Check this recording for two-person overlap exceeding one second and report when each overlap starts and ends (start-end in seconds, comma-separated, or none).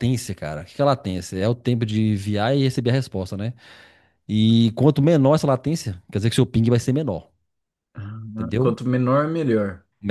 none